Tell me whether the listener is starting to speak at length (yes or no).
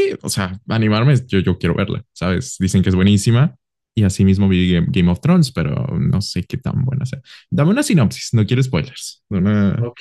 yes